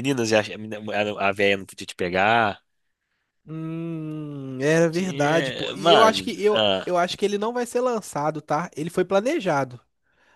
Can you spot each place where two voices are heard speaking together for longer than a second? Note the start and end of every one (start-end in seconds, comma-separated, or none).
4.9-6.9